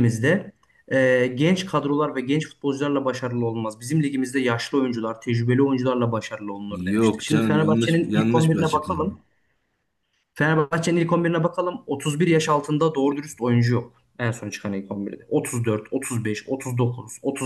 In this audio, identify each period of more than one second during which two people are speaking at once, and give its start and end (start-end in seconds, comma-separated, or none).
6.7-9.1